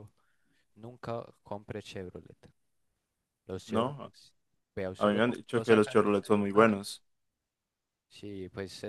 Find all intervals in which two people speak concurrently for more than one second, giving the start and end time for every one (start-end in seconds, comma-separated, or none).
5.0-6.8